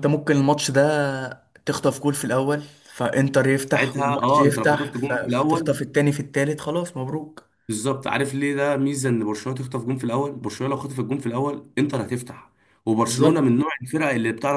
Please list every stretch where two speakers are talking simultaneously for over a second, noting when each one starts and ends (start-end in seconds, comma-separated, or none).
3.7-5.8